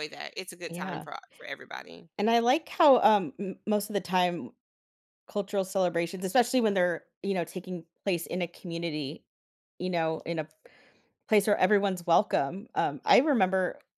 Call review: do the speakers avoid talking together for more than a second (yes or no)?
yes